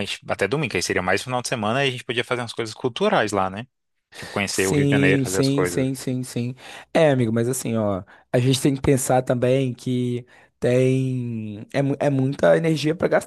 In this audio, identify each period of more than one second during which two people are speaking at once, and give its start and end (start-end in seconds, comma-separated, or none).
4.5-5.9